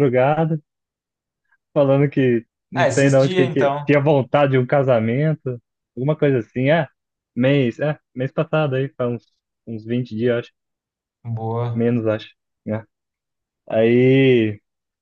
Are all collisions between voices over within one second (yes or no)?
no